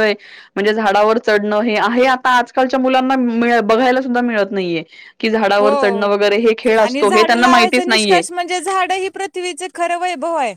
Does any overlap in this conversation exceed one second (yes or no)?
no